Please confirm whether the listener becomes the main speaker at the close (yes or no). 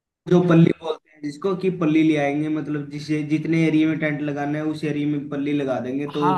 yes